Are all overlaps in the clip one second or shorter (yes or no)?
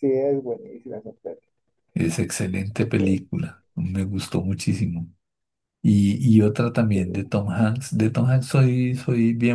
yes